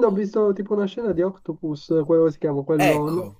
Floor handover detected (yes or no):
yes